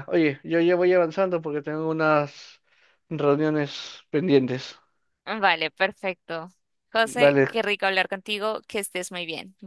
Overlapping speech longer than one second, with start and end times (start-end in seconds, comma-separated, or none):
none